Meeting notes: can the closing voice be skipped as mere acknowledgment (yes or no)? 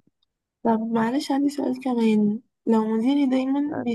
yes